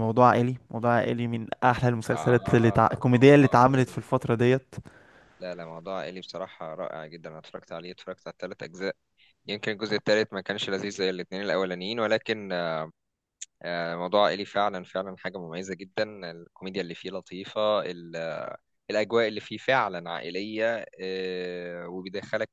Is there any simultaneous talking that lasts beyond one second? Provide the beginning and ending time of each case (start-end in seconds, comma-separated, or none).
2.1-4.1